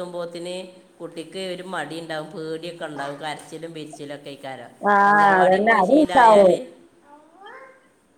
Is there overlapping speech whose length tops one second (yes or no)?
yes